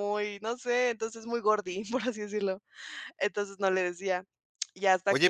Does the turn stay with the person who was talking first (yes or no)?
no